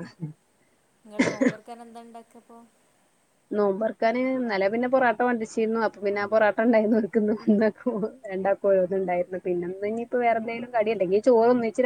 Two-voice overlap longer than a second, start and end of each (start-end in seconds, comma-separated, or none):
none